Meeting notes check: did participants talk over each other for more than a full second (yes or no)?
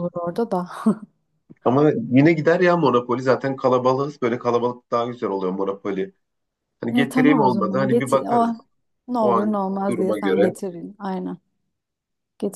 yes